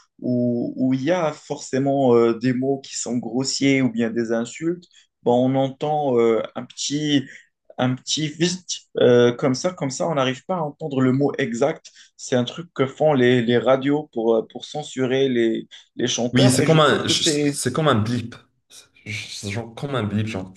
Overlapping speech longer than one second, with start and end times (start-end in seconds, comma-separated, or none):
16.3-17.6